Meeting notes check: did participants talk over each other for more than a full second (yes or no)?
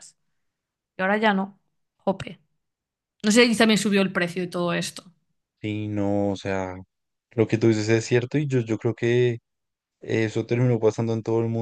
no